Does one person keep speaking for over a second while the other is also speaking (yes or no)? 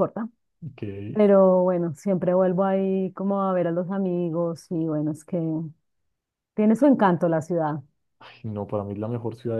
no